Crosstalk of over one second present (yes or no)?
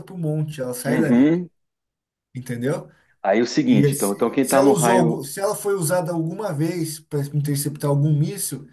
yes